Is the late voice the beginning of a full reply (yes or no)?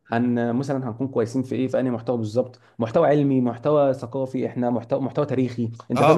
yes